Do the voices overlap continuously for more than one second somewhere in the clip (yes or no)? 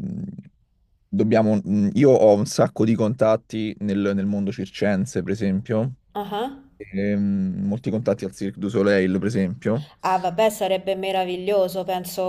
no